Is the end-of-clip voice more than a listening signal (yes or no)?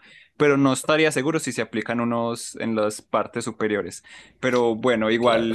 no